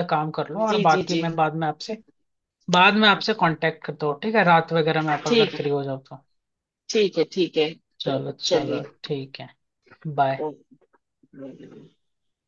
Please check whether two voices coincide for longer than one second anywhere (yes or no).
no